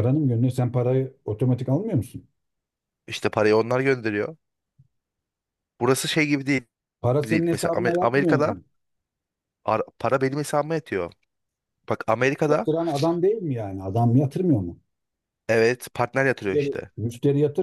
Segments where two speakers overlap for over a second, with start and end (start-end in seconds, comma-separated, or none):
7.2-8.6